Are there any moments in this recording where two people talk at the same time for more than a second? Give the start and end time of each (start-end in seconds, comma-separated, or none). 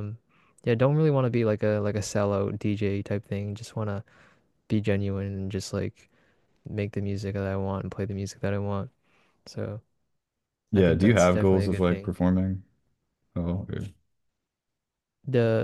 10.7-12.1